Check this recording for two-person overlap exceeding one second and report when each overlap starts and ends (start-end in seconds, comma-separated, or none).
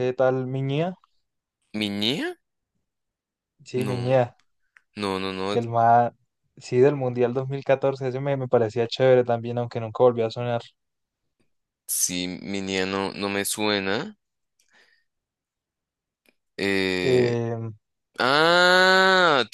none